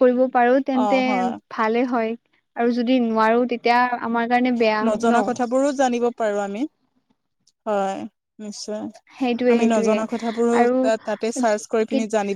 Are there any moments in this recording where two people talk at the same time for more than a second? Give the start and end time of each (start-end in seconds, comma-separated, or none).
none